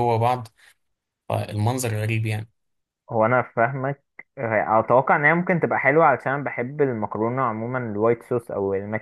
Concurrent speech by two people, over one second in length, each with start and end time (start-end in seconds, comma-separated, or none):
none